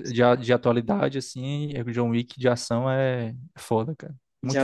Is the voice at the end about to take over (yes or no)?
yes